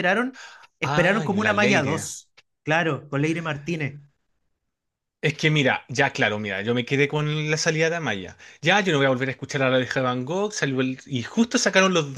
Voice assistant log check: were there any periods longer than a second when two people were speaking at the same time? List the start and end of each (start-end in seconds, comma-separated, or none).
0.8-2.1